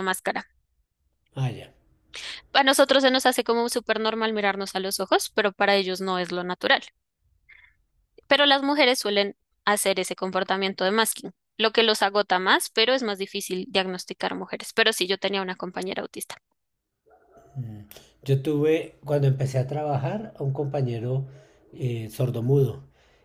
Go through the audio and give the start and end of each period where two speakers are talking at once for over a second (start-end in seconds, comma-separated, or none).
none